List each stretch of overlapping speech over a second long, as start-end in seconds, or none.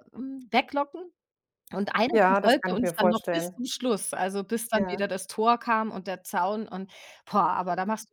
2.1-3.6